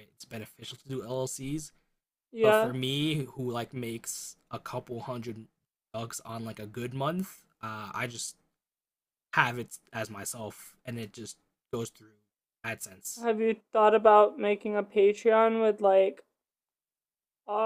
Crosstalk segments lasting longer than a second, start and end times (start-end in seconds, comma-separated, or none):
none